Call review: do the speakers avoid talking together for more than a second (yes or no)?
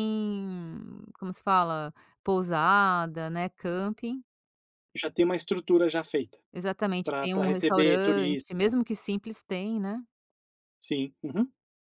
no